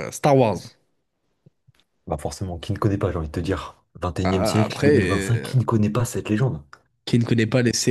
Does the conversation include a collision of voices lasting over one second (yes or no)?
yes